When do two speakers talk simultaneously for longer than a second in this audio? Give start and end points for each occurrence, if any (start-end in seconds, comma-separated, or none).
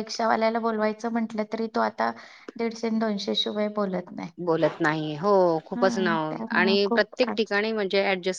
5.8-7.6